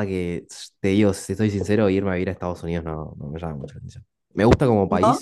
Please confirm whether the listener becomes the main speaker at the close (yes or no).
no